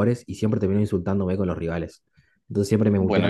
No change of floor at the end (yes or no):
yes